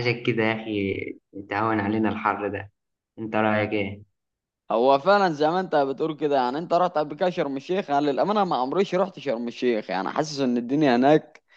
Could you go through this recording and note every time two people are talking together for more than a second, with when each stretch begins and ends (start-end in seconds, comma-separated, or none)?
none